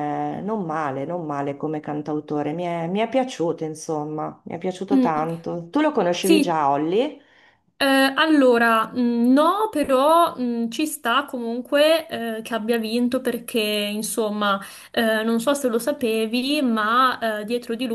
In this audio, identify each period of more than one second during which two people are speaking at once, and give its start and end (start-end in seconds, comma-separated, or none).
none